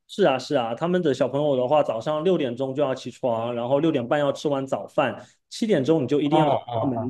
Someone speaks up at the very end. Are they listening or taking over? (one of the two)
listening